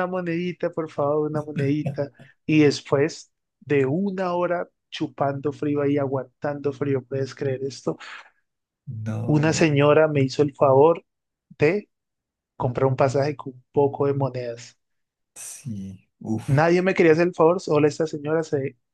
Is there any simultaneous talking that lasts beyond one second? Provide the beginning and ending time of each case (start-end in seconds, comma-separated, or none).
none